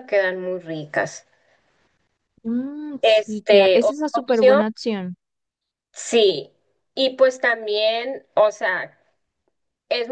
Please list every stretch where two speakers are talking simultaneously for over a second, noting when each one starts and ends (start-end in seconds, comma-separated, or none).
3.0-4.6